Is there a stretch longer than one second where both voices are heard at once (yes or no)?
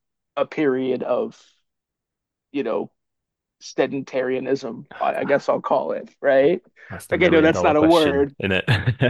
yes